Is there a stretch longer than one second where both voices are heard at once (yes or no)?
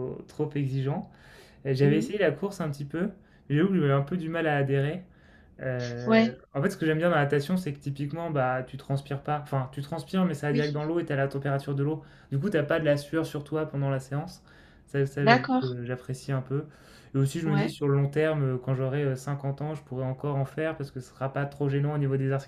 no